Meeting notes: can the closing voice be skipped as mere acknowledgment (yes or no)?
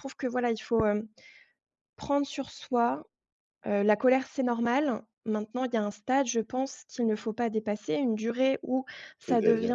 yes